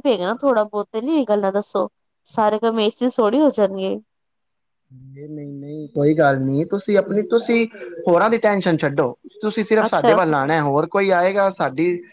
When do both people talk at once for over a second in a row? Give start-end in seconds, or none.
none